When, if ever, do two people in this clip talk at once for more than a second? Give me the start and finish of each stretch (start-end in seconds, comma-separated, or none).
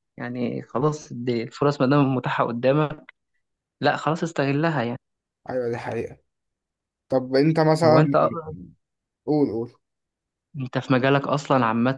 none